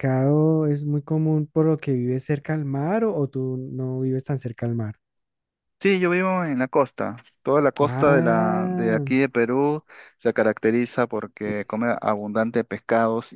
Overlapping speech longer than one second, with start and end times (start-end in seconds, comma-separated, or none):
7.8-9.1